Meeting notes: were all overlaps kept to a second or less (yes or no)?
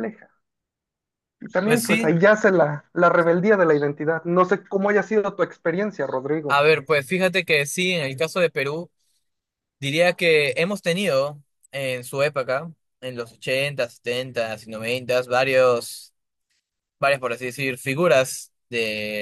yes